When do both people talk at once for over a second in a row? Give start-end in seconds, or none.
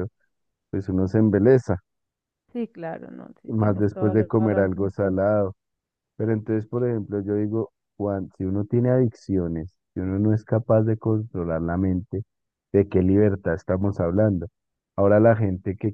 3.5-5.2